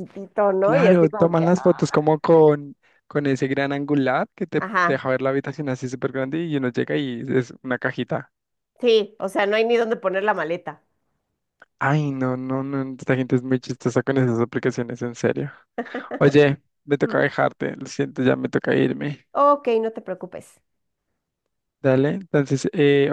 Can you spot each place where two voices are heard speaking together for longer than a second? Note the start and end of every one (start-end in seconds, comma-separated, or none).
0.6-1.8